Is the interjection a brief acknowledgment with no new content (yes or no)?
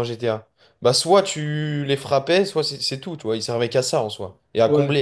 yes